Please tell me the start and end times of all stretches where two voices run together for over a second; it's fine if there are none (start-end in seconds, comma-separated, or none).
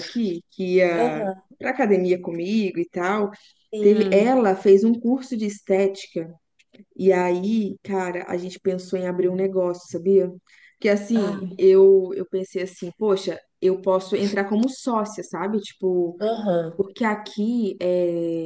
none